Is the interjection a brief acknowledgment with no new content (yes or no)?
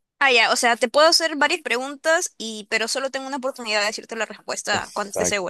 no